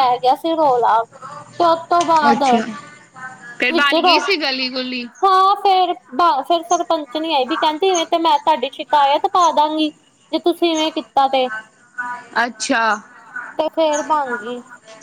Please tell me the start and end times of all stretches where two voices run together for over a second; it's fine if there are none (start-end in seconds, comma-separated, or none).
3.7-5.0